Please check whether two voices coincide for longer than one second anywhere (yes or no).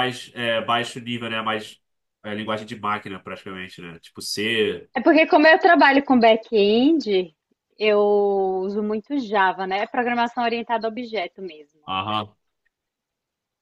no